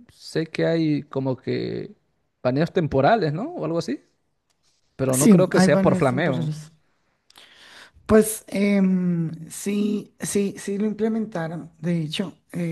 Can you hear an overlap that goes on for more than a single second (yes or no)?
yes